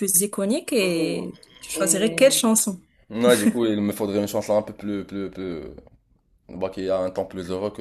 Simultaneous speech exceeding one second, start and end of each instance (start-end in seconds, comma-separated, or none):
none